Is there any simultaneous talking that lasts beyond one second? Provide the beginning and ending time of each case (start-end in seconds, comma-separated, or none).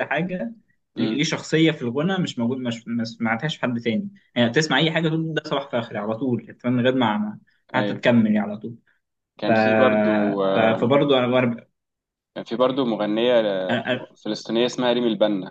none